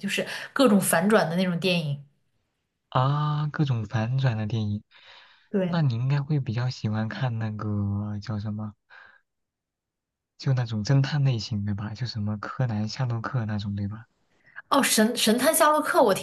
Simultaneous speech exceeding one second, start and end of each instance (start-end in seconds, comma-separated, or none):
none